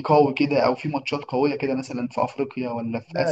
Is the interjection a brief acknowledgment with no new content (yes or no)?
no